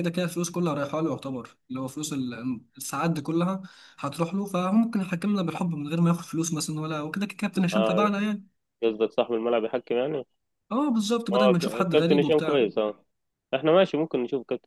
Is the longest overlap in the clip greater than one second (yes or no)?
yes